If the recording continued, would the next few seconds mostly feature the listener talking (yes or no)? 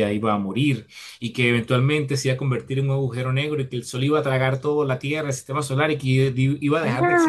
no